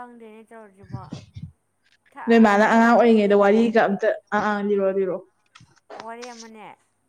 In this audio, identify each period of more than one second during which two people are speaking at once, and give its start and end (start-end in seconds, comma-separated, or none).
2.3-3.5